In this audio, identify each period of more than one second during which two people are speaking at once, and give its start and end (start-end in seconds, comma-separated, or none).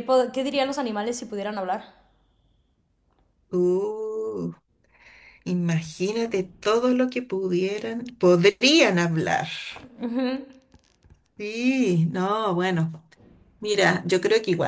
none